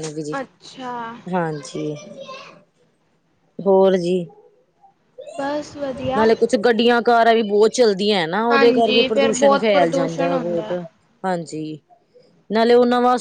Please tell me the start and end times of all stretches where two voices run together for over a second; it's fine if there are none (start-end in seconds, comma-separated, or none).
8.5-10.7